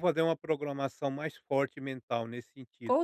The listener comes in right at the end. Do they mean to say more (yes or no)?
yes